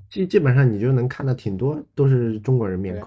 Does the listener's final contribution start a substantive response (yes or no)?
yes